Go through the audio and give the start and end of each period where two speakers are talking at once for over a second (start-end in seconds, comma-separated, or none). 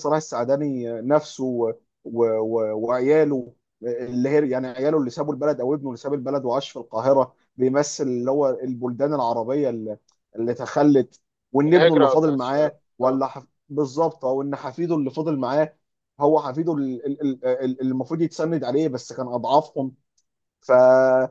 11.7-13.2